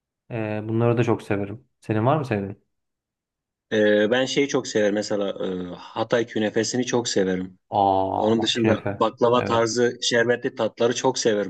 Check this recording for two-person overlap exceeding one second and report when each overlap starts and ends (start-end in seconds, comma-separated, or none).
8.2-9.8